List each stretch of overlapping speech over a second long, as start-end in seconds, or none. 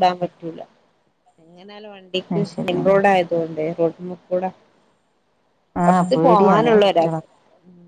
5.9-7.2